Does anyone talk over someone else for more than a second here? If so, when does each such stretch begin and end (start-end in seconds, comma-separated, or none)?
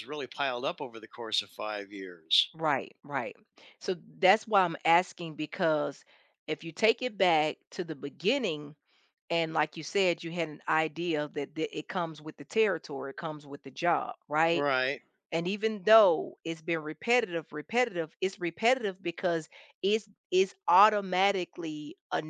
none